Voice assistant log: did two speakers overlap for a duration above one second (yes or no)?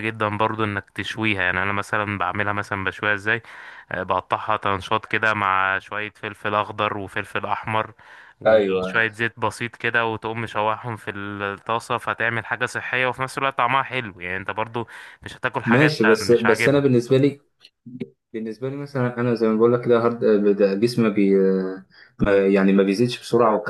yes